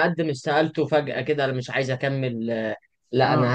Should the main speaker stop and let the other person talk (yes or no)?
no